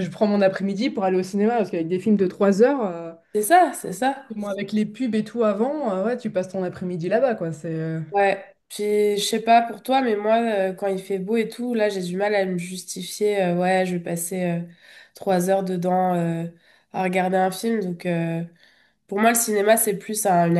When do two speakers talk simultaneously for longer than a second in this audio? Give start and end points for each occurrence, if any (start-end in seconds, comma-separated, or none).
none